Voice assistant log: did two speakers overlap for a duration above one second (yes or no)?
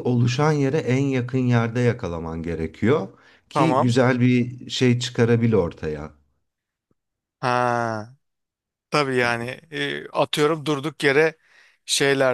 no